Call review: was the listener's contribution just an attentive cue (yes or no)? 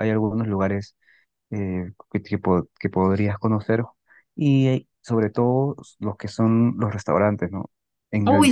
no